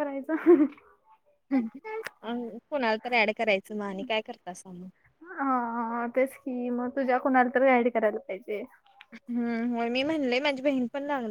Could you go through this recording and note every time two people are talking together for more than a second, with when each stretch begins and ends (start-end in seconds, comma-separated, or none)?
none